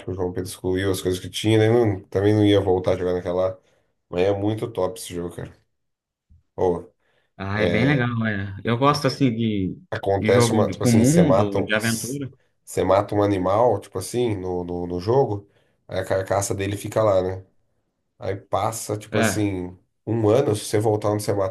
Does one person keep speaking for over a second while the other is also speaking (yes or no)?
yes